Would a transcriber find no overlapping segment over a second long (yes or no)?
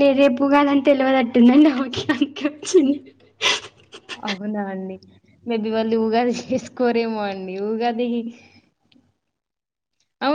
yes